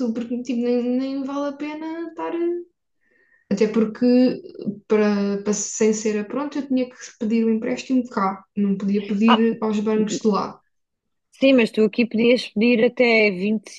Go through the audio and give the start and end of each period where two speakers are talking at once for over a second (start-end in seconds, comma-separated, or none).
none